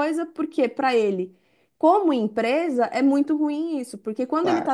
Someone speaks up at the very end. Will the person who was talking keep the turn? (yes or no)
yes